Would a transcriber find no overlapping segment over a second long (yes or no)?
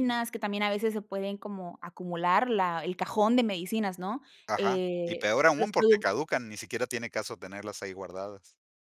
no